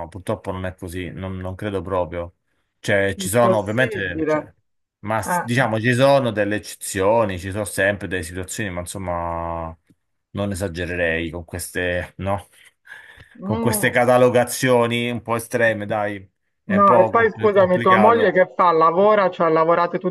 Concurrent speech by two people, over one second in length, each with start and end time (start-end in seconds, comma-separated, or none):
3.2-4.4, 16.7-18.4